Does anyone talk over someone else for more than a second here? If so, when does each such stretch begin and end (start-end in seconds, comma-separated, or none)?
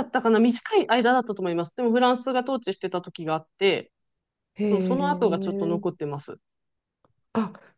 4.6-5.8